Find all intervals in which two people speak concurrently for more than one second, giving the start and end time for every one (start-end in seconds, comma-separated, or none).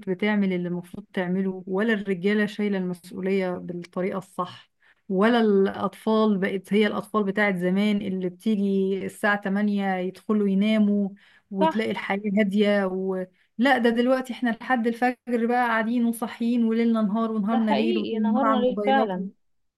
17.5-19.1